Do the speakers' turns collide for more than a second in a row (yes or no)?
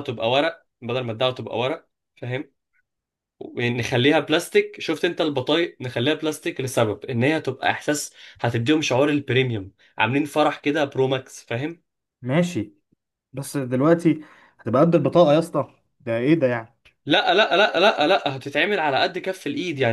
no